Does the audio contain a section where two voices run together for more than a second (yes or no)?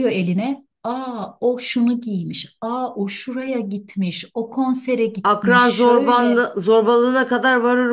yes